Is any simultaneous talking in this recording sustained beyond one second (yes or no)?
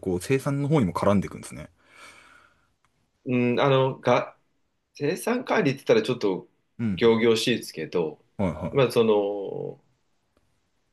no